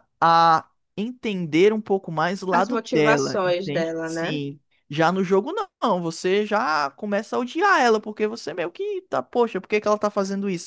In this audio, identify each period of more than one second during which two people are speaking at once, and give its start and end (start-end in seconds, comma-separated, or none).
2.5-4.4